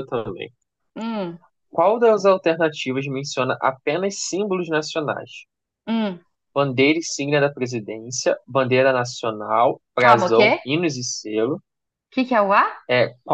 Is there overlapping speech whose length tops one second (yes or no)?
no